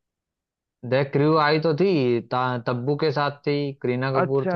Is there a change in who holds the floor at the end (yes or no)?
yes